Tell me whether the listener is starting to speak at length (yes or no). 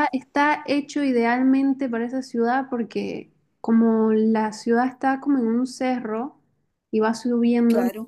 no